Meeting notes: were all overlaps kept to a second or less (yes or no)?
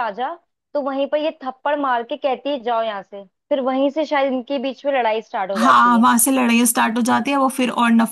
yes